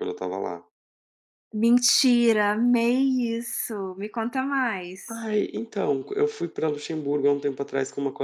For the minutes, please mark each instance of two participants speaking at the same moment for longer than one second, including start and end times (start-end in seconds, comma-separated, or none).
none